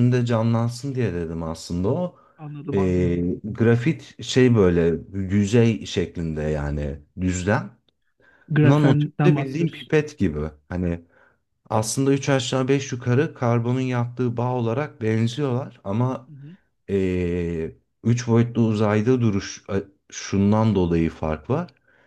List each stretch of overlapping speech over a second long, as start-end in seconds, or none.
8.6-9.9